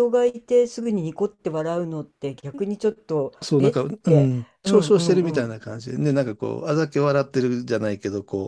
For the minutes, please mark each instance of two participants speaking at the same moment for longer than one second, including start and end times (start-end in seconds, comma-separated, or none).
3.4-5.6